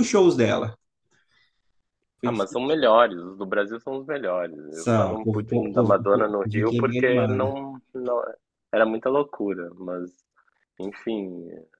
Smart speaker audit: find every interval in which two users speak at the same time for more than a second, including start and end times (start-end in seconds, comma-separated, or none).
4.7-7.5